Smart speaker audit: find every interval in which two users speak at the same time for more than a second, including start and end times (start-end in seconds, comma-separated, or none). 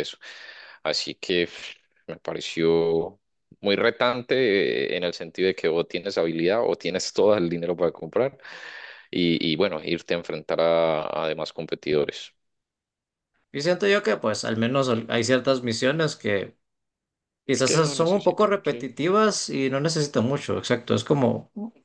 17.6-19.0